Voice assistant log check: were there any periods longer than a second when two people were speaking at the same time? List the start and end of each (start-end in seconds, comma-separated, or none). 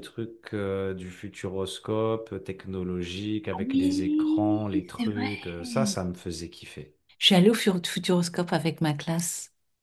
3.7-5.3